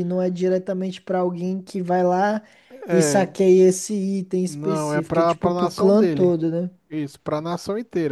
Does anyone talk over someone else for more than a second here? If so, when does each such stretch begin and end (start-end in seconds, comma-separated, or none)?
4.5-6.4